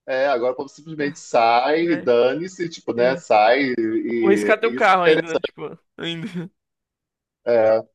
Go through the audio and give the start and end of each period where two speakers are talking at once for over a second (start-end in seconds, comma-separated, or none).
none